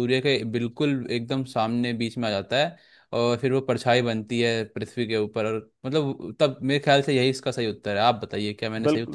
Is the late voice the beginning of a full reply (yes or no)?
yes